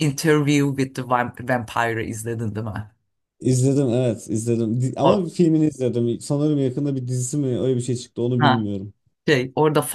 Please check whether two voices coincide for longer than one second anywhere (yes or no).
no